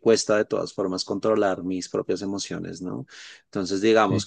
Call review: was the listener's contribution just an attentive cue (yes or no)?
yes